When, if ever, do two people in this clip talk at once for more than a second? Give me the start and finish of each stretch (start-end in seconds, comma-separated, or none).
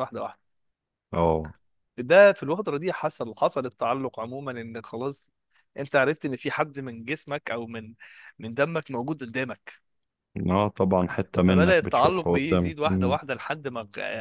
11.5-13.2